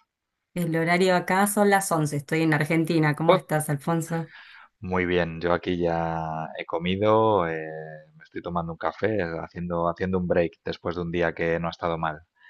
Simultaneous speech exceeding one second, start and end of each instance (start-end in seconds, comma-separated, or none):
none